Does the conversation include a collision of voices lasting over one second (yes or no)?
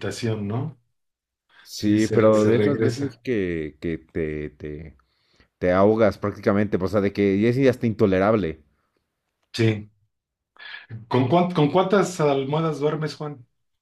yes